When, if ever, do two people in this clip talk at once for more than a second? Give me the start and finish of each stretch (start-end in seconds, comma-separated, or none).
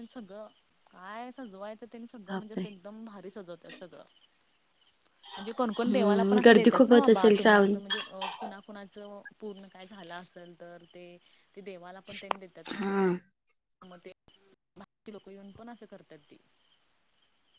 5.9-7.8